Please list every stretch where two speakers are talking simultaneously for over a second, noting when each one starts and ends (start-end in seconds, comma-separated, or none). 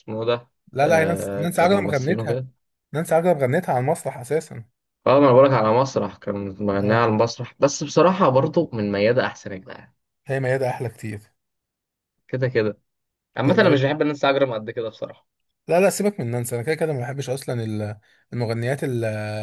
0.7-2.4